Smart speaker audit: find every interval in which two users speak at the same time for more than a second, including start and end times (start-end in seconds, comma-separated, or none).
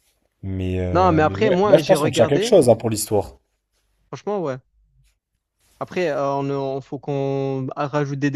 0.9-2.6